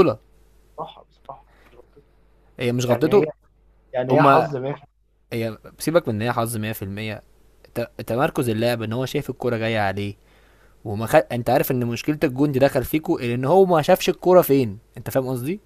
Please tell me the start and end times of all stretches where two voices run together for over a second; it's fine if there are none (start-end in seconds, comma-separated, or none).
none